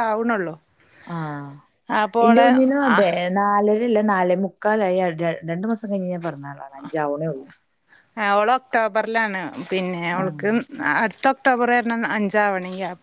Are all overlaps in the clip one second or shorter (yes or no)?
yes